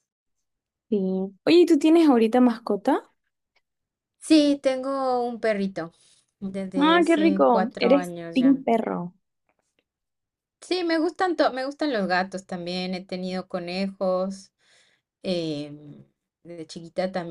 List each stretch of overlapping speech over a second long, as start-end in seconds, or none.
6.8-8.6